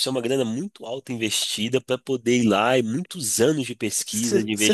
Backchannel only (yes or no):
no